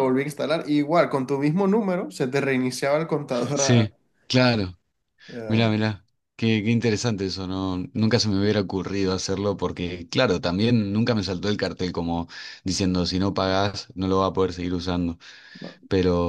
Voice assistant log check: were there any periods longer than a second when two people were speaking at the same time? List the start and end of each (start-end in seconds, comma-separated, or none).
none